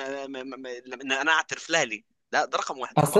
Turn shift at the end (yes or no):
yes